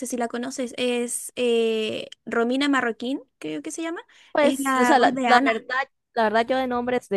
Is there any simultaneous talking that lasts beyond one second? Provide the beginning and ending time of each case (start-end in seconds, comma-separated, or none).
4.4-5.7